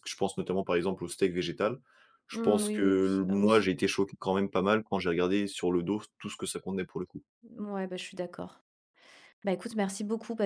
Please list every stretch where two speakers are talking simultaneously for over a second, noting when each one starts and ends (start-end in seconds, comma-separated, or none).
2.3-3.7